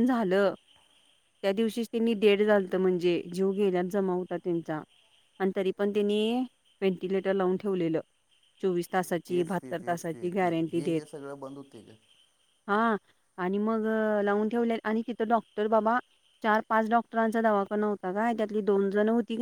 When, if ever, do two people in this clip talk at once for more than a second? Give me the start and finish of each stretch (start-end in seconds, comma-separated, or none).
9.3-11.1